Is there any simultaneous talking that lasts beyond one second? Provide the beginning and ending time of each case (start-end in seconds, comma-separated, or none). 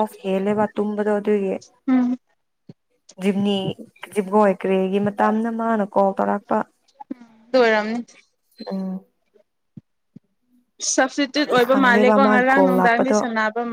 11.4-13.2